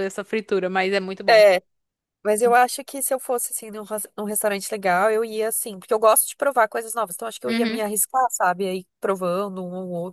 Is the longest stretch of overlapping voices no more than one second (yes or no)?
yes